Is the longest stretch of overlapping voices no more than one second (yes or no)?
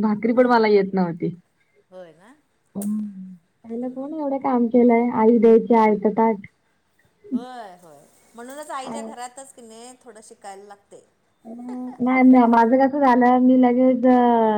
yes